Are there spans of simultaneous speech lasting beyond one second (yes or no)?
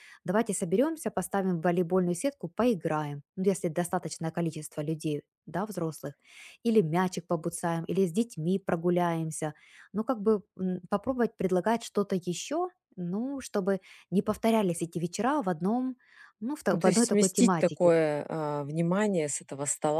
yes